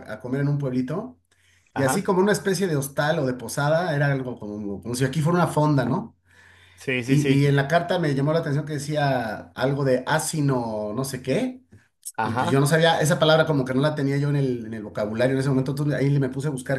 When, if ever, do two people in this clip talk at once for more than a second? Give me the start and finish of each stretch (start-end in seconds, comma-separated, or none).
none